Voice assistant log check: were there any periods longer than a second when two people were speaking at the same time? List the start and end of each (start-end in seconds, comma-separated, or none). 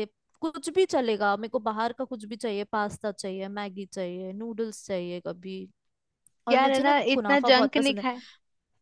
6.5-8.0